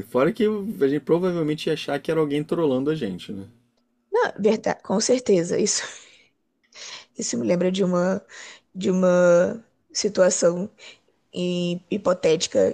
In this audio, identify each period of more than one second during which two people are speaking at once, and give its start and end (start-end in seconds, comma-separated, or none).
none